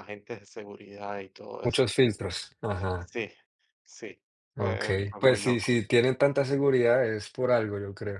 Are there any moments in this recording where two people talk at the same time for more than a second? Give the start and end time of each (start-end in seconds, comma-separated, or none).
4.6-5.8